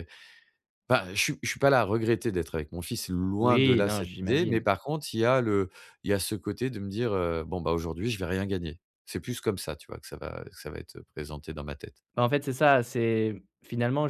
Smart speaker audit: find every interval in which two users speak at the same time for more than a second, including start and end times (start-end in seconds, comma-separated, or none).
3.4-4.6